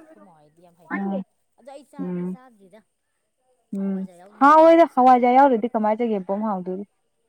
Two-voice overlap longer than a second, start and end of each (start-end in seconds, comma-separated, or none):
3.8-5.3